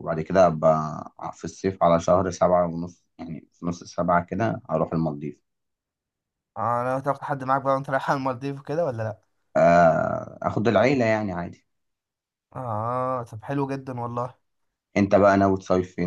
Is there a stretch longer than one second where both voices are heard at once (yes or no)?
no